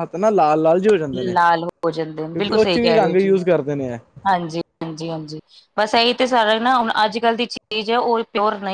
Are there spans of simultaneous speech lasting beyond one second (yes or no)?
yes